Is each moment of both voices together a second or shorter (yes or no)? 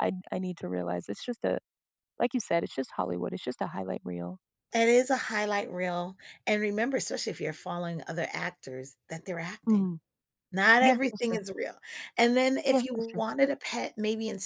yes